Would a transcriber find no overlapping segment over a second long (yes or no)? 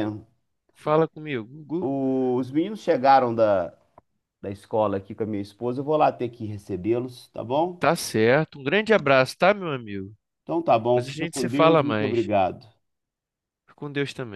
no